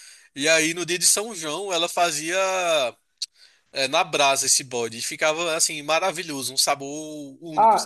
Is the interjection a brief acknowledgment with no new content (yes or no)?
no